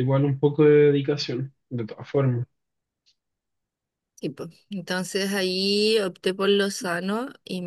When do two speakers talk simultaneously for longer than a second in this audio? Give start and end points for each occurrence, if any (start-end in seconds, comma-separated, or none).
none